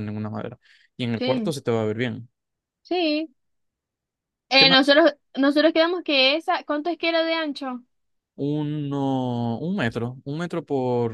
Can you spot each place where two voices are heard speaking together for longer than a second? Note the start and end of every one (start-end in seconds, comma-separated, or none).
none